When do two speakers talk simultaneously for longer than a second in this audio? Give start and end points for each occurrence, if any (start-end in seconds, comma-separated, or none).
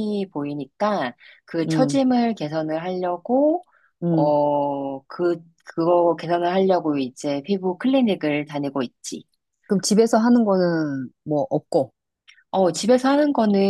none